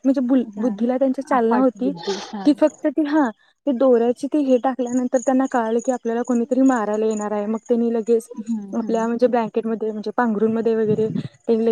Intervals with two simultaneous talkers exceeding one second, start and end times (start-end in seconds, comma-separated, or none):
0.6-1.9